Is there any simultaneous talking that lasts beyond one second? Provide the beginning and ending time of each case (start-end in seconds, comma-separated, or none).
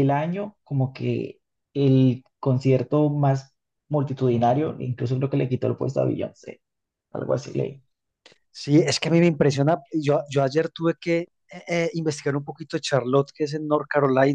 none